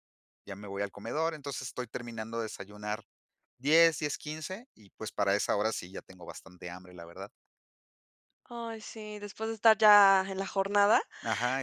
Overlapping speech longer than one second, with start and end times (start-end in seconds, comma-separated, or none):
none